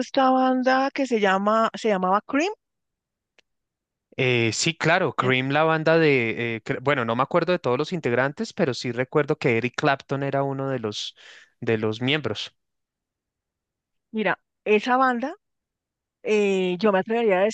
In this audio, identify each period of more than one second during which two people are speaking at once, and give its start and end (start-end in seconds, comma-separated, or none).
none